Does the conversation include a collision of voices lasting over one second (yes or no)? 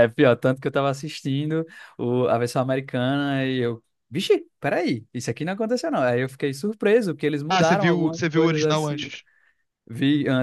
yes